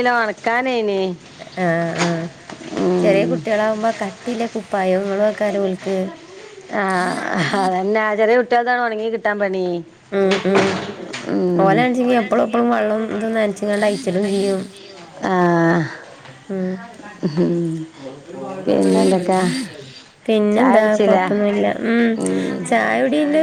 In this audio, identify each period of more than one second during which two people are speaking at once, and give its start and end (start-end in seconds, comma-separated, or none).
none